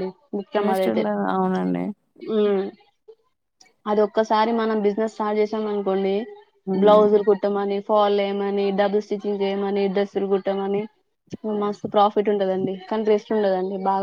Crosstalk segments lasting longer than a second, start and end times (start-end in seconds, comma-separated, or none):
none